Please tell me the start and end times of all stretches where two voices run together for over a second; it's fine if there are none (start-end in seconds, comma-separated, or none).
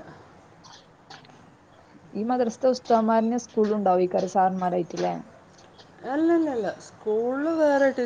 none